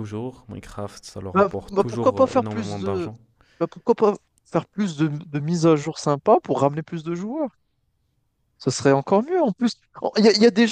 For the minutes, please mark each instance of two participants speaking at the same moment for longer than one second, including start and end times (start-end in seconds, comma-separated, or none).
1.3-3.1